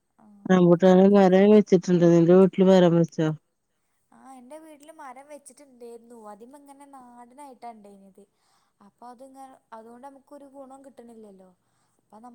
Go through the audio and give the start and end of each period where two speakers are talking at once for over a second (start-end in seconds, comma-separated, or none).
0.5-3.2